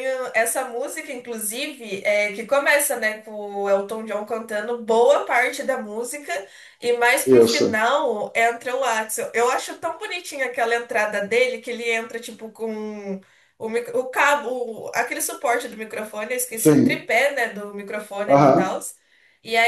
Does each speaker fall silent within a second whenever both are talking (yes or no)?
yes